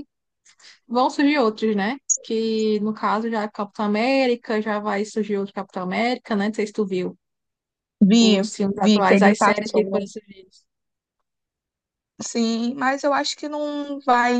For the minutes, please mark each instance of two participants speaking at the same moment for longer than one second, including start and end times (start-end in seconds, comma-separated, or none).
8.2-10.1